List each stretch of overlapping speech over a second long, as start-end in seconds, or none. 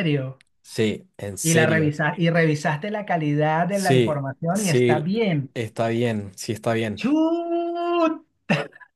3.7-5.1